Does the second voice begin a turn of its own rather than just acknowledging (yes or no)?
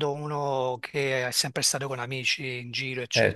yes